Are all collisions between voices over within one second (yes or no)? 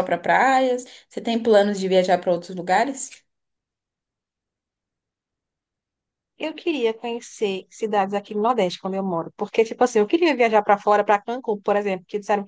yes